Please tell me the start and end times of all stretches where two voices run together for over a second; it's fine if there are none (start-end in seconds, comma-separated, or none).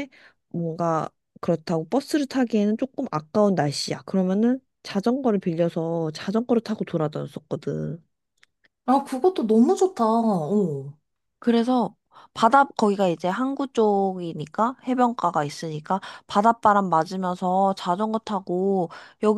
none